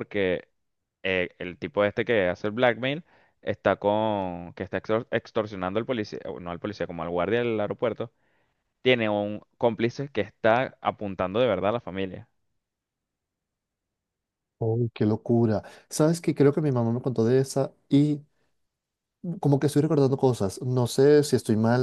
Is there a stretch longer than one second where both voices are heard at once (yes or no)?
no